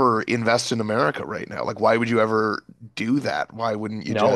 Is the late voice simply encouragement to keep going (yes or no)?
no